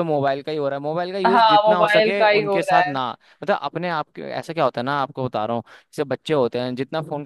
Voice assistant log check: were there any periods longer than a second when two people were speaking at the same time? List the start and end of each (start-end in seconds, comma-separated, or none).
1.3-2.9